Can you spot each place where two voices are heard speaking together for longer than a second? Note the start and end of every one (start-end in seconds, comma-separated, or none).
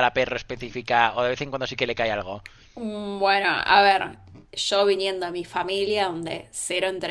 none